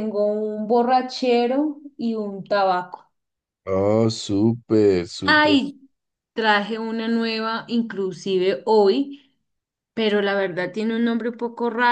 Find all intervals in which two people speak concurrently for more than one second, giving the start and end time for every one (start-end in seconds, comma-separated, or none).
none